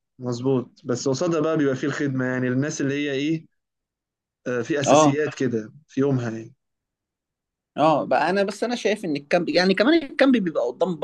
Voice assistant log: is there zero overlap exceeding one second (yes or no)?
yes